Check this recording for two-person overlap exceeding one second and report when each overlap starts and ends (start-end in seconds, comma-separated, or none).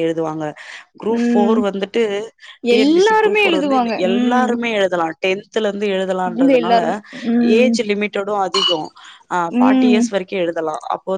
2.8-4.5